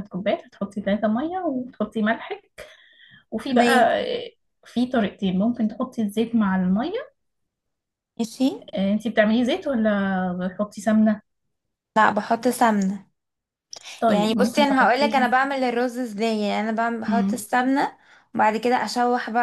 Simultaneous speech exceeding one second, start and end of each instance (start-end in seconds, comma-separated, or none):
14.1-15.3